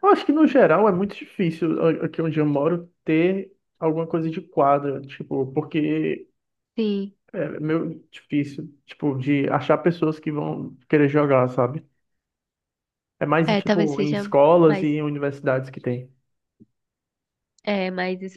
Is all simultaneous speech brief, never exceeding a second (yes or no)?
no